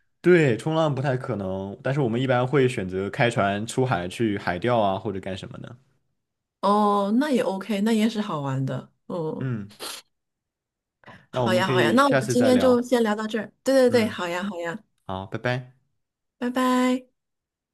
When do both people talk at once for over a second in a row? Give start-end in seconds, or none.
11.3-12.9